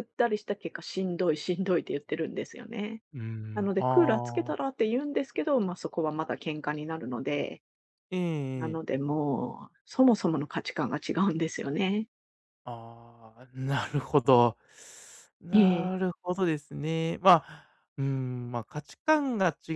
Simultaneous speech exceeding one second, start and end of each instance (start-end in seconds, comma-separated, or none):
3.5-4.7